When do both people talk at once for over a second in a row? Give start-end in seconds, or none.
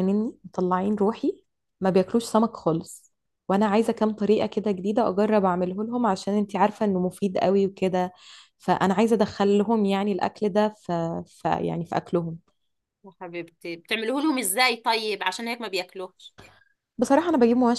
none